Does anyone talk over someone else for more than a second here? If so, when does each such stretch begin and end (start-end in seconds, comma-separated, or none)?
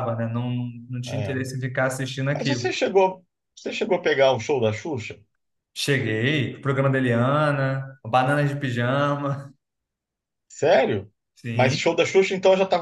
none